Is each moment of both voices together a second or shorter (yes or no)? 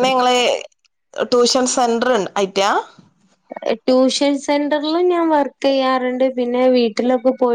yes